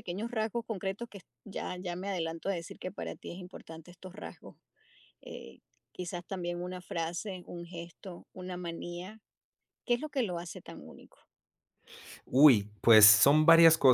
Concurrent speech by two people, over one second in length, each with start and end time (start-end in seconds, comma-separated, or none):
none